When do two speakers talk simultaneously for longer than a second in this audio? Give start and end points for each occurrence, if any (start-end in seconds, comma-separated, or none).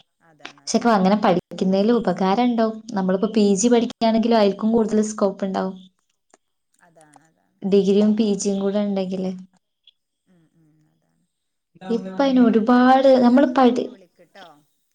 12.0-13.8